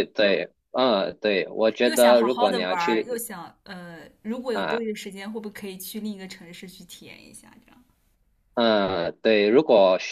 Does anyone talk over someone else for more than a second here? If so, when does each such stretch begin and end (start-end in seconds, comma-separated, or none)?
1.8-3.2